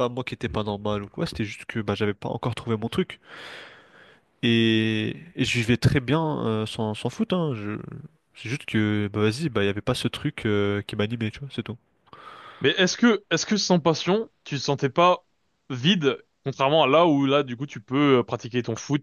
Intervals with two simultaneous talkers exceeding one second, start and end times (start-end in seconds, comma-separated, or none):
none